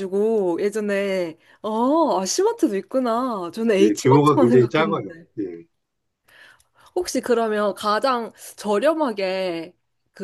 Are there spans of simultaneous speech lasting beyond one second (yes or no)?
yes